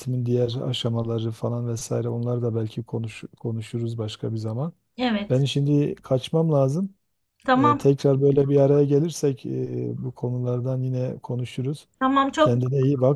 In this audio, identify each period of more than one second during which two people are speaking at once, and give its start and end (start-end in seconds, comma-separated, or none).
none